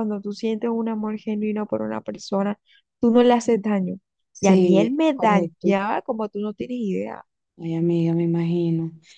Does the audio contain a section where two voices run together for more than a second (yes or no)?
yes